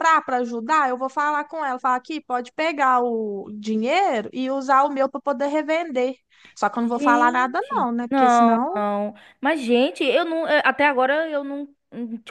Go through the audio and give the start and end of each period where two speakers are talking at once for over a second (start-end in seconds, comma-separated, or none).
6.9-8.8